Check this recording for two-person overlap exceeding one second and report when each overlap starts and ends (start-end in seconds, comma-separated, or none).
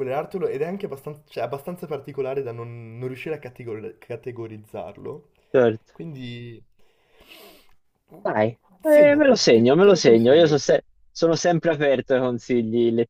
8.9-10.6